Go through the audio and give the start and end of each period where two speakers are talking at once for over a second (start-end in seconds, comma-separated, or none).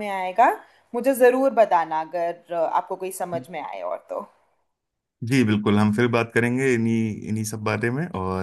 none